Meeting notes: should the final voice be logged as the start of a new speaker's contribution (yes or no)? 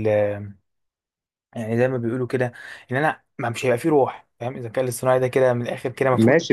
yes